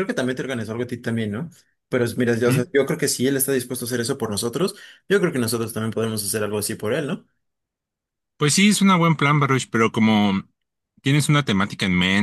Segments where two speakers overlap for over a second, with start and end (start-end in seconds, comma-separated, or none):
none